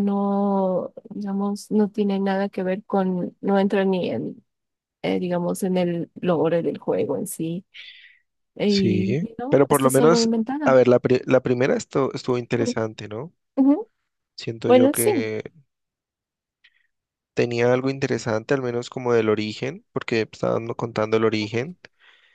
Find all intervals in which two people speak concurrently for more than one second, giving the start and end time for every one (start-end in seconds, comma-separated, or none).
8.7-10.8